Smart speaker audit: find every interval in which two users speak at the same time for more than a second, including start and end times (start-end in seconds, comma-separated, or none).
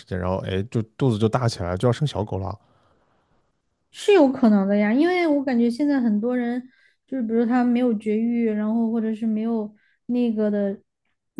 none